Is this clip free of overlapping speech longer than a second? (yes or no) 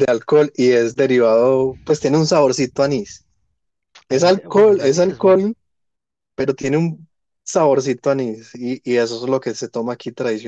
no